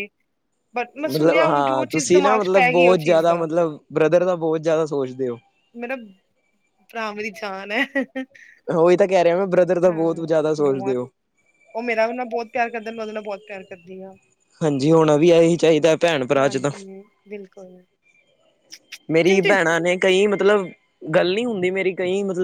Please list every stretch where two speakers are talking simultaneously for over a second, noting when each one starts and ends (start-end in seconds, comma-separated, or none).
1.1-3.5